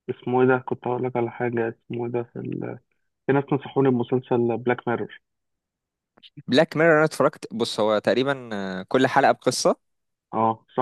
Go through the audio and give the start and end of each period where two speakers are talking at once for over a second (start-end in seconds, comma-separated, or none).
none